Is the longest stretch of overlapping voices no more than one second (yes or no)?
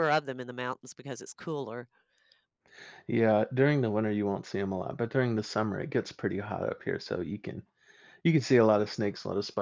yes